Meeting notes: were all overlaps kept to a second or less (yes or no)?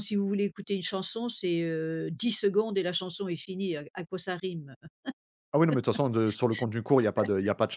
yes